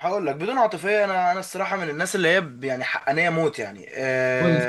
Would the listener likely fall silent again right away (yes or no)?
yes